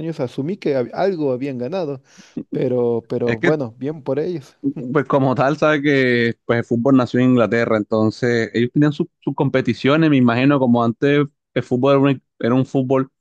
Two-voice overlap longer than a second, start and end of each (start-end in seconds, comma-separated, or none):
none